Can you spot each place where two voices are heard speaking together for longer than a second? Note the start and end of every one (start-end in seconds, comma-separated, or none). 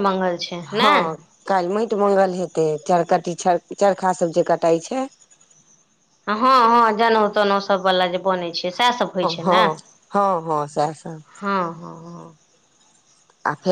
none